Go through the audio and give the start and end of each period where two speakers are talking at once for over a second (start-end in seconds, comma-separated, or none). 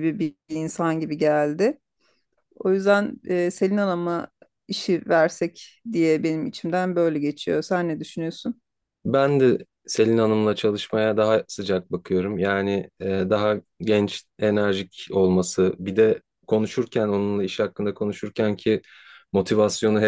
none